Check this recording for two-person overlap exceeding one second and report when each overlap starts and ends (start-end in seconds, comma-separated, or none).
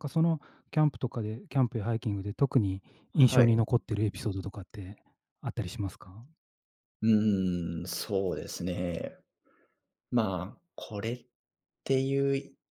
none